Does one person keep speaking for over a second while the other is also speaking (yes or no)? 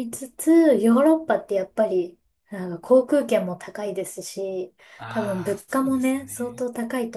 yes